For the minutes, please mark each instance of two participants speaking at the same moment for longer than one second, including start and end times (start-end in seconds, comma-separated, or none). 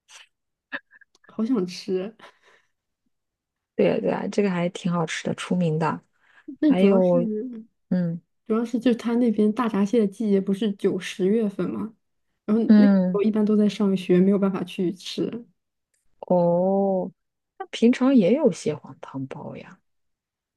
none